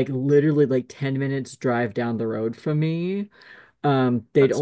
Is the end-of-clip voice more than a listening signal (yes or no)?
no